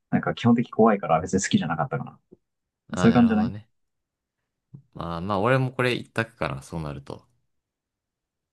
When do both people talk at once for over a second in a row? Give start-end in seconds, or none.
none